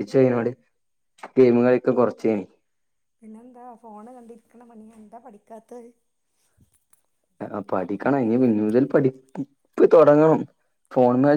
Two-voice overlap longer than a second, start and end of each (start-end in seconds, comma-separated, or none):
none